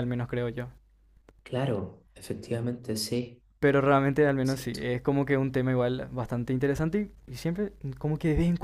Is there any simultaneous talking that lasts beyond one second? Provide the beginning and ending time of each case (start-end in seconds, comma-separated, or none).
none